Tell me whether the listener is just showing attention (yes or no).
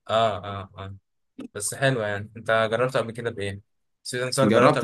no